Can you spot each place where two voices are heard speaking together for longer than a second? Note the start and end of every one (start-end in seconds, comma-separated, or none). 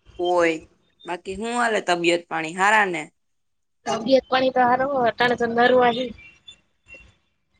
none